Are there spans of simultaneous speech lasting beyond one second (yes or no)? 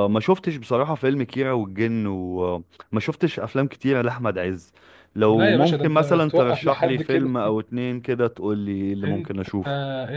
yes